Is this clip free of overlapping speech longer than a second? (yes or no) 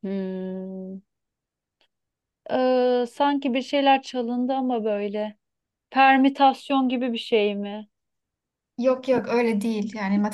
yes